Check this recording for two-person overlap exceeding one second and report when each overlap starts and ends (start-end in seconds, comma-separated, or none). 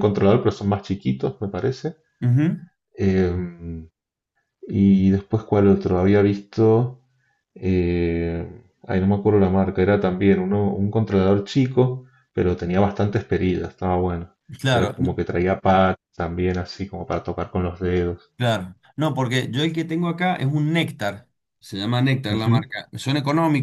none